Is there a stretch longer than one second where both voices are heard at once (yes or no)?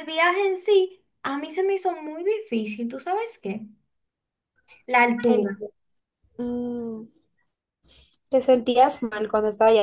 no